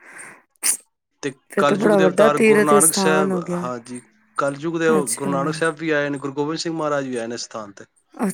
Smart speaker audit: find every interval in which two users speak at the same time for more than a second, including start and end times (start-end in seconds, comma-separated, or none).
1.5-3.6